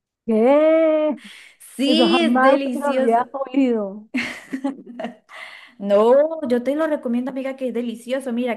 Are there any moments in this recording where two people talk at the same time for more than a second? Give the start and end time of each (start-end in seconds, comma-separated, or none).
1.9-3.3